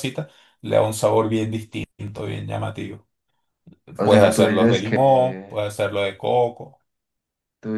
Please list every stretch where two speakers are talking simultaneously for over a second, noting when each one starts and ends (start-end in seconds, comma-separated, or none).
4.0-5.6